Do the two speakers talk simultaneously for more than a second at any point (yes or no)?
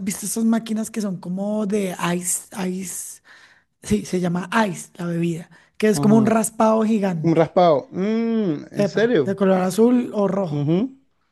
no